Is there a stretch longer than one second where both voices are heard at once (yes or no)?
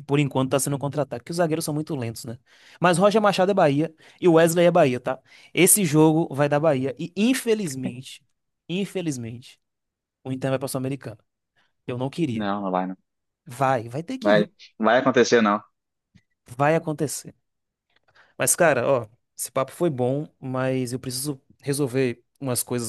no